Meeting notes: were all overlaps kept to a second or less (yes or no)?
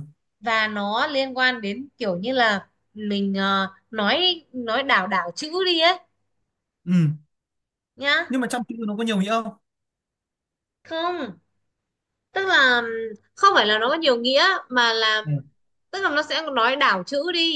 yes